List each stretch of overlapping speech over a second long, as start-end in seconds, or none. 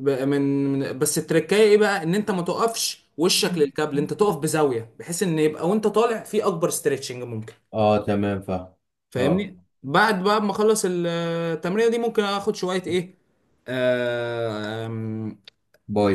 none